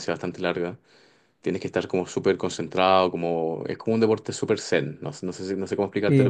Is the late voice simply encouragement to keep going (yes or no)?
no